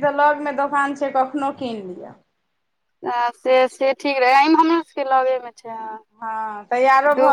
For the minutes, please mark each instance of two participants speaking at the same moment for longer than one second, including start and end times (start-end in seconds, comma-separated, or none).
none